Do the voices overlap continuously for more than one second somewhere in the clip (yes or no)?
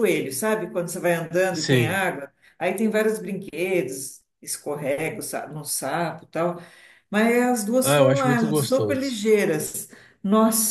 yes